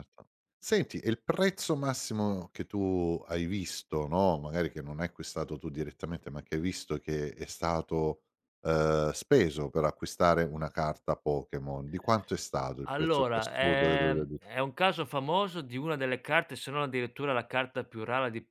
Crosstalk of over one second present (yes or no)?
yes